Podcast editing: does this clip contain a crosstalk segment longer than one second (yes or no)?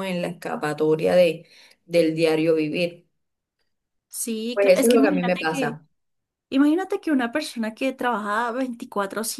yes